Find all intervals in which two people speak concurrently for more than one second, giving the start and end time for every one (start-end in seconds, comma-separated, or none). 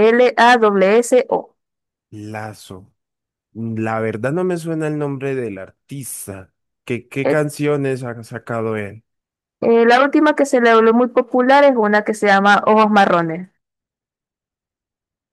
none